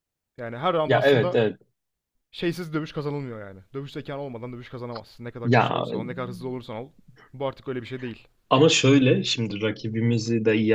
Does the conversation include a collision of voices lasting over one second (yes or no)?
no